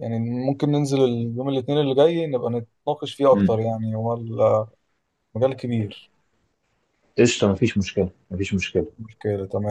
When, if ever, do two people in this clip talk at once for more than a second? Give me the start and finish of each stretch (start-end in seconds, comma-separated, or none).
none